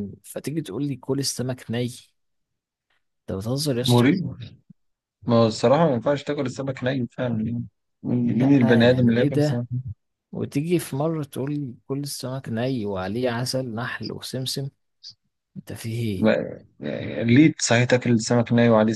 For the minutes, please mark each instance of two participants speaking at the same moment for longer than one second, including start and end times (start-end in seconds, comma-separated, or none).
8.3-9.7